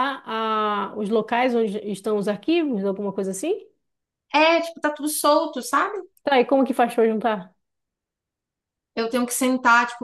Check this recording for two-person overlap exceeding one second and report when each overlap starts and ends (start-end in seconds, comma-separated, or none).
none